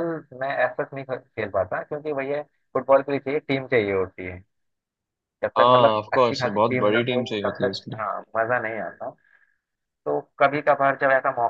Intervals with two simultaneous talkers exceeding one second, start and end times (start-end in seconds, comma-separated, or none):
5.6-8.0